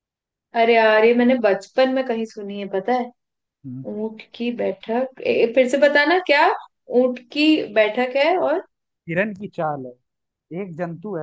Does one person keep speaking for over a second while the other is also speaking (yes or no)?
no